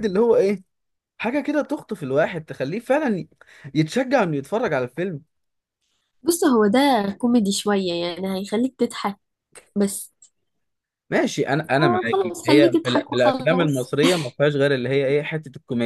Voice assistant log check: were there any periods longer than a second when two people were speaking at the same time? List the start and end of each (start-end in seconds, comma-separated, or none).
11.8-13.9